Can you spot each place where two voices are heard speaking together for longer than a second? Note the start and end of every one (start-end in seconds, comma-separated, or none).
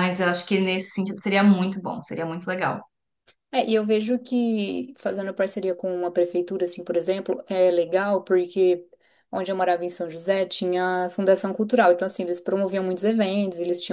none